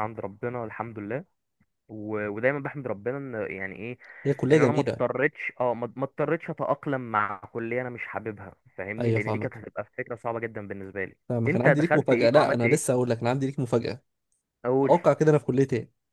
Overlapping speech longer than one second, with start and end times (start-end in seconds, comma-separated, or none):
11.3-12.8